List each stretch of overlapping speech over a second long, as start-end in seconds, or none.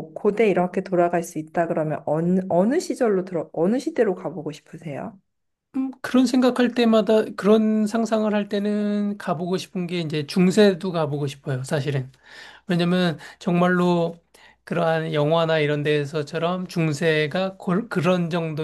none